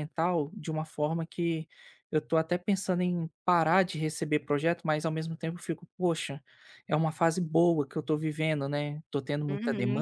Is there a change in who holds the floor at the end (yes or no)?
yes